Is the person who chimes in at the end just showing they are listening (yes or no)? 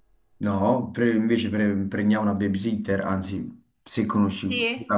no